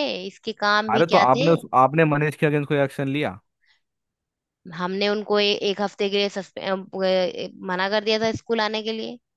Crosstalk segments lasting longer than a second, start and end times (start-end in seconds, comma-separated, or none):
none